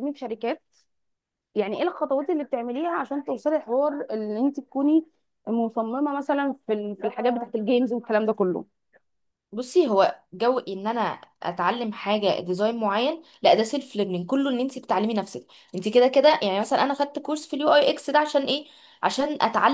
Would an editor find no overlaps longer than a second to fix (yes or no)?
yes